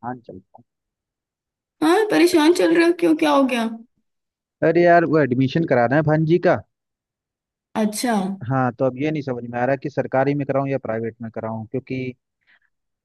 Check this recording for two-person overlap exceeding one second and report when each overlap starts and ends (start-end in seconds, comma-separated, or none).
none